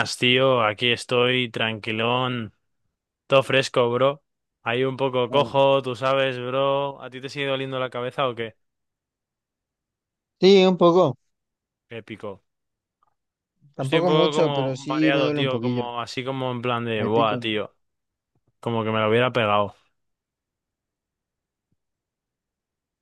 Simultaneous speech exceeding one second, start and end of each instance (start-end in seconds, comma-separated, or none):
13.8-15.9